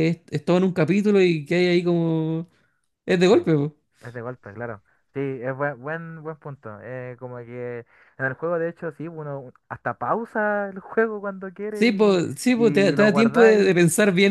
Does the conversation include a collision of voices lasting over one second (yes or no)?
yes